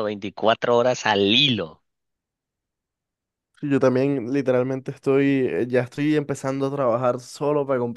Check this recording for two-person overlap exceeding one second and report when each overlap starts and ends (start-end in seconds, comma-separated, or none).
none